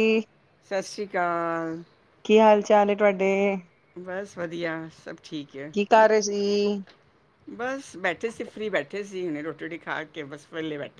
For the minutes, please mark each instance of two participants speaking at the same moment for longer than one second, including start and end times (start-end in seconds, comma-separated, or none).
none